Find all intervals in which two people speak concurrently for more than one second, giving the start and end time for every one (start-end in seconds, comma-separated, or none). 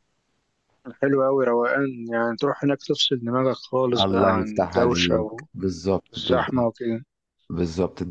4.0-5.5